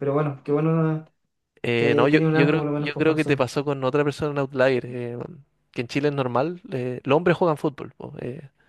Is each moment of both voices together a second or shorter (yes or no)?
no